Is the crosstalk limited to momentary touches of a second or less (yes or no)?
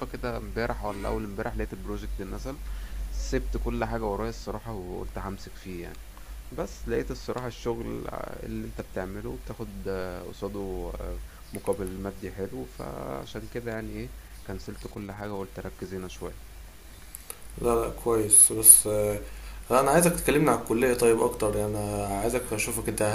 yes